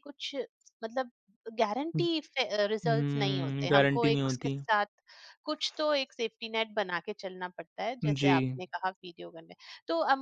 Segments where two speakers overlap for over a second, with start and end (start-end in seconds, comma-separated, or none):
2.9-4.6